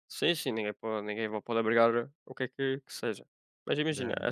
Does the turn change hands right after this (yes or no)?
no